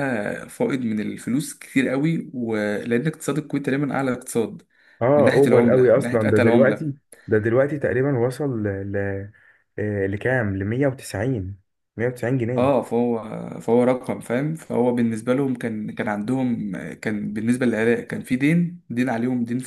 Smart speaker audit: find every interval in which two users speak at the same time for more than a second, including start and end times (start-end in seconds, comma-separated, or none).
5.2-6.9